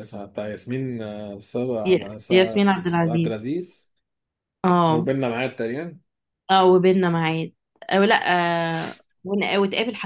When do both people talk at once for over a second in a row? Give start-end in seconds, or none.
1.9-3.4